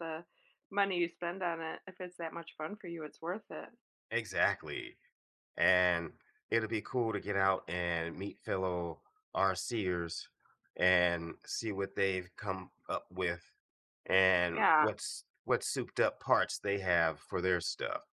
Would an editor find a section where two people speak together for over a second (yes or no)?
no